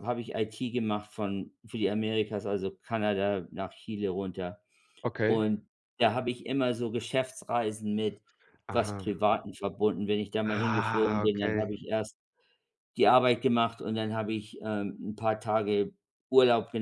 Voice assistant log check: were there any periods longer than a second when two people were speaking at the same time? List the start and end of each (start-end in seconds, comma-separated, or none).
10.4-11.7